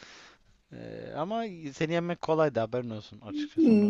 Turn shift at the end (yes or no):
yes